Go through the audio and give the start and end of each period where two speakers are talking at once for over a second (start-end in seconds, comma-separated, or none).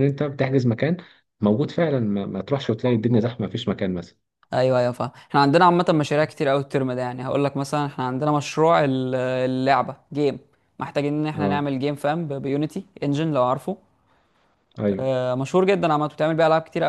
none